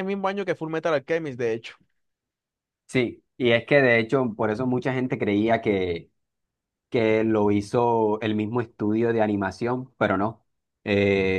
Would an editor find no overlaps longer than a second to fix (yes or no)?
yes